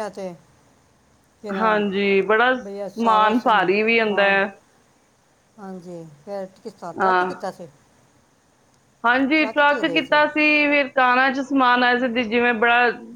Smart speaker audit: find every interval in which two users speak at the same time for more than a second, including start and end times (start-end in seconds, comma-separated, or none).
2.6-4.3